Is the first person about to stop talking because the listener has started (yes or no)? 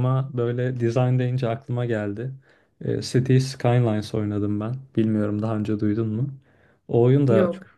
no